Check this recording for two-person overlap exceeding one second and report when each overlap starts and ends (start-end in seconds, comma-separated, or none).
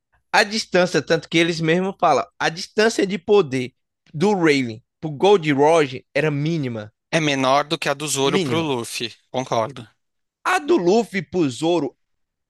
none